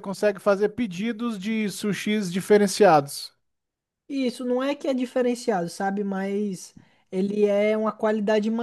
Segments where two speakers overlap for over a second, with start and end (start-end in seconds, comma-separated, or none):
none